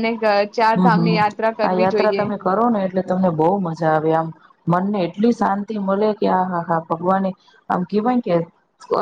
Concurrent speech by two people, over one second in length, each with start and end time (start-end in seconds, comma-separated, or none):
0.8-2.2